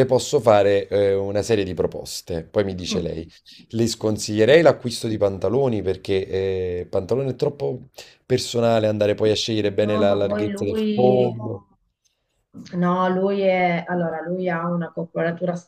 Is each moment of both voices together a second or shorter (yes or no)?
no